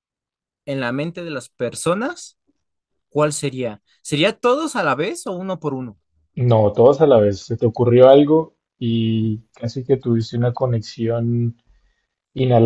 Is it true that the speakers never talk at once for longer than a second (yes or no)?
yes